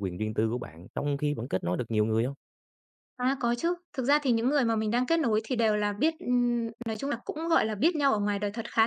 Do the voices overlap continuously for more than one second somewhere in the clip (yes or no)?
no